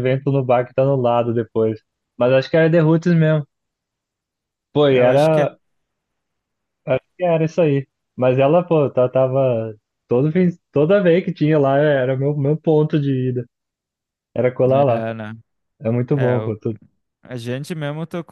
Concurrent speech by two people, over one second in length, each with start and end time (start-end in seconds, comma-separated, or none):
none